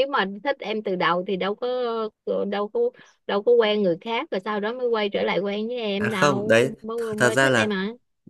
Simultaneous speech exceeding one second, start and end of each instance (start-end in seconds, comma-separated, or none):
5.9-7.7